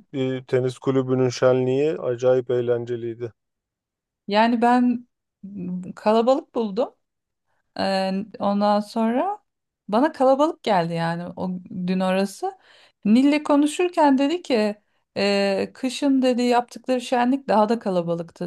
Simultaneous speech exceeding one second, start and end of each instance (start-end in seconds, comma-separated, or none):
none